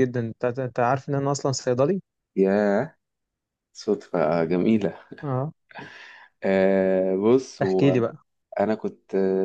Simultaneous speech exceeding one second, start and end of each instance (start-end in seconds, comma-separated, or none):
none